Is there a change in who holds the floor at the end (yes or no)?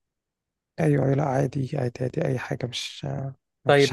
yes